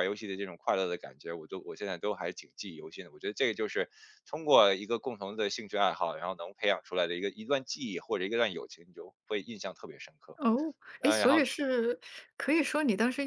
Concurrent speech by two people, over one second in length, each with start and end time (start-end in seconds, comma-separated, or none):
none